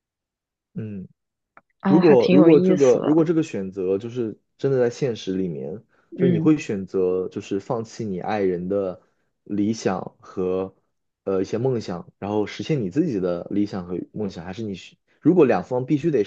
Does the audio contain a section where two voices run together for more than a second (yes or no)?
yes